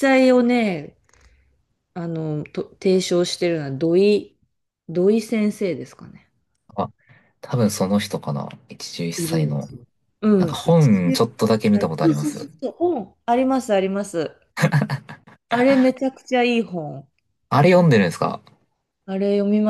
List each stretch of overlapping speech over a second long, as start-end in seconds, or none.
10.4-12.5